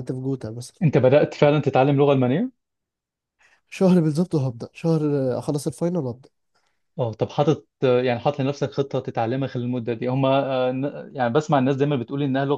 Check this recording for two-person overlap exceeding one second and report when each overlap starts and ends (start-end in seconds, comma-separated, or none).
none